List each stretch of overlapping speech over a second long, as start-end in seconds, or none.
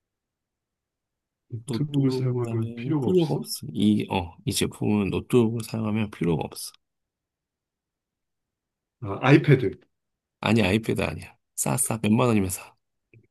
1.7-3.5